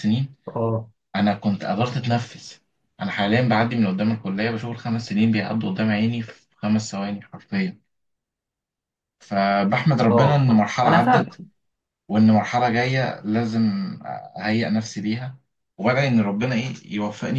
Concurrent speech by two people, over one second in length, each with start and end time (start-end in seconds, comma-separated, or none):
10.1-11.4